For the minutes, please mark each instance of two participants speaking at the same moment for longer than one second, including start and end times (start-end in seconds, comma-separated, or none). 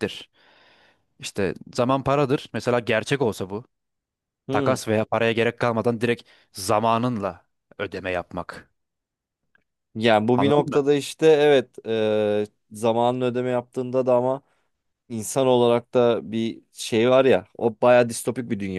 none